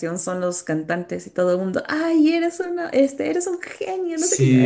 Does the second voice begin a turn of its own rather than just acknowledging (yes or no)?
yes